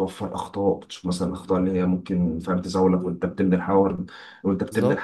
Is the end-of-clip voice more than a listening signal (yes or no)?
no